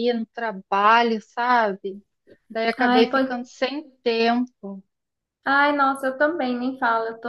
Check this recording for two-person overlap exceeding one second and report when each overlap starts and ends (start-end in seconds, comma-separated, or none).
none